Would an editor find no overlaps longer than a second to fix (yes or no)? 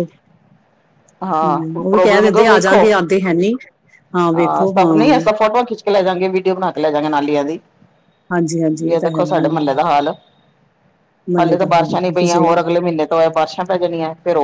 no